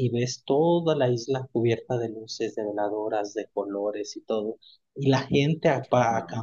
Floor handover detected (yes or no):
no